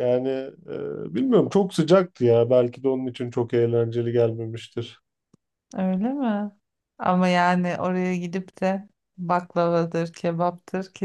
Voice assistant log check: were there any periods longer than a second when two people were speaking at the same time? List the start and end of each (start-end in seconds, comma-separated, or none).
none